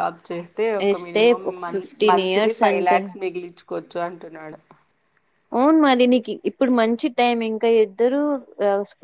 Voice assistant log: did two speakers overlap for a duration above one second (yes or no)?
yes